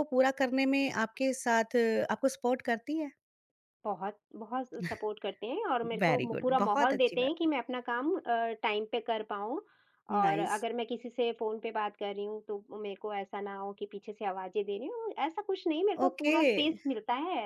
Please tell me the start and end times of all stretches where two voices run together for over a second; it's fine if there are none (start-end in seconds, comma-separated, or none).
6.0-7.5